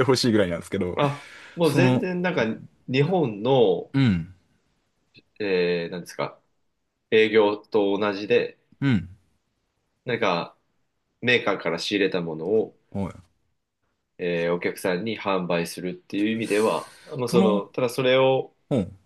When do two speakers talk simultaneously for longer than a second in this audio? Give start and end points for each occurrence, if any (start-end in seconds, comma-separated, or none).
none